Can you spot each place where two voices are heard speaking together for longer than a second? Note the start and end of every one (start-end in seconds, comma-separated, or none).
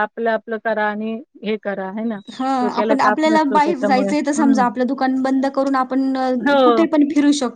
2.6-4.6